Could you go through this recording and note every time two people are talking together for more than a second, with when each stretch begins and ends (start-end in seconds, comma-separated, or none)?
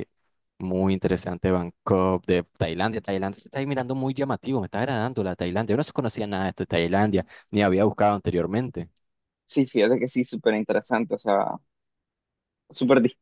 none